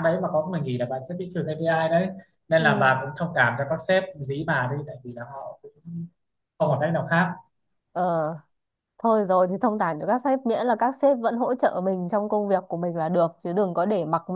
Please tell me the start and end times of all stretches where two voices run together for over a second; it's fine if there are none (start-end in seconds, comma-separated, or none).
none